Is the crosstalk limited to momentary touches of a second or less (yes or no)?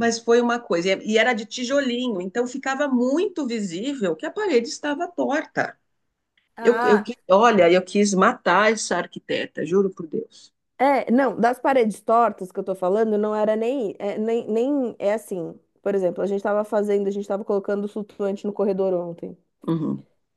yes